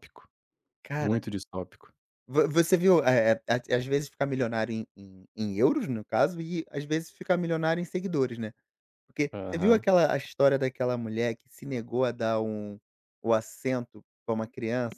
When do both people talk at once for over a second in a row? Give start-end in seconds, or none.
none